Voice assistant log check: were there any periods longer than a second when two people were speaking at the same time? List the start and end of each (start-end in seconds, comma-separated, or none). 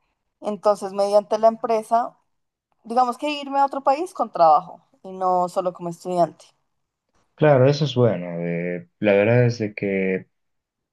none